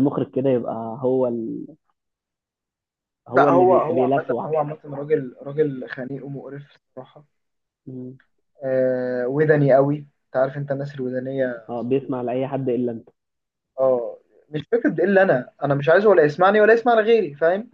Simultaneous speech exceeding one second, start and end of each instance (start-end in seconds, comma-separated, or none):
3.3-4.6